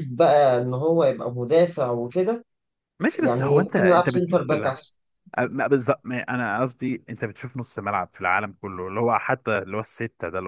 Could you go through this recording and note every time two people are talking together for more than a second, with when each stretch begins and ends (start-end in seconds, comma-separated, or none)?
3.1-4.9